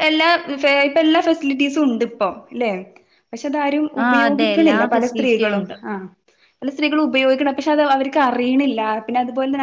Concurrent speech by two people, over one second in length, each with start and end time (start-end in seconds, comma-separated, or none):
4.0-5.8